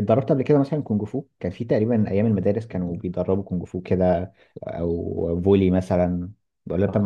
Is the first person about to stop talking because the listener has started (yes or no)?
yes